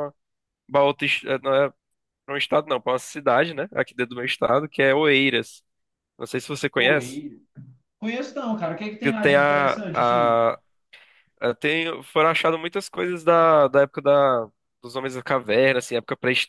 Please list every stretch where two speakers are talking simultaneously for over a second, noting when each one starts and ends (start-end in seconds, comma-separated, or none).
9.0-10.4